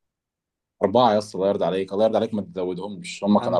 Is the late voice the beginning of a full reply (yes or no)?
yes